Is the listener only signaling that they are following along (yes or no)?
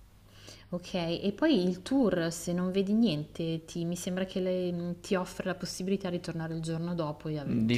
no